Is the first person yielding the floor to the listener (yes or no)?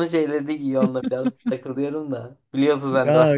yes